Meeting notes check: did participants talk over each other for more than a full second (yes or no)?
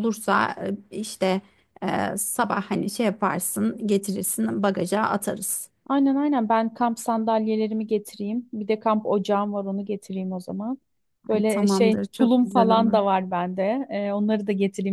yes